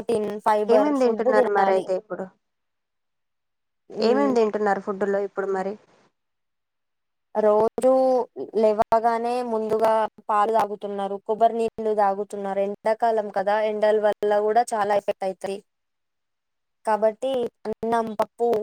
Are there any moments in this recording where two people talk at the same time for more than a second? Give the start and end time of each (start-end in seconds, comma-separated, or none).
none